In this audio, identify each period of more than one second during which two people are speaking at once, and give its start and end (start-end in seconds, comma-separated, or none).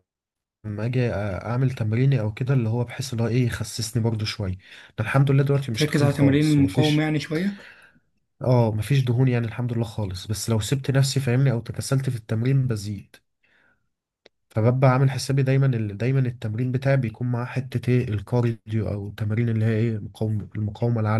5.7-7.1